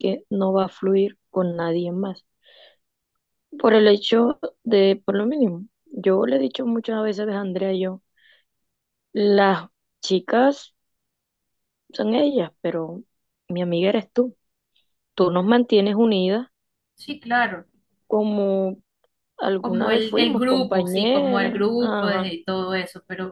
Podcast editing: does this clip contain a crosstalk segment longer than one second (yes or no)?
yes